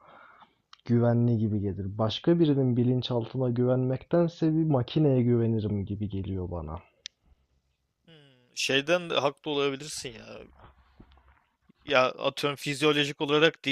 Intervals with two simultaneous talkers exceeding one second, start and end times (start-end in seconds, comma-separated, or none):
none